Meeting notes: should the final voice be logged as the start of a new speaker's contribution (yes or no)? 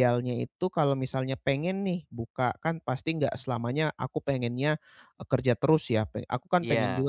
no